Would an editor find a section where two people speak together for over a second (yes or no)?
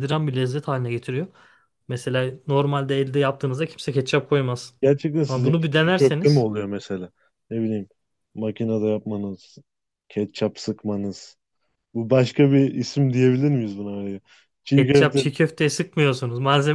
yes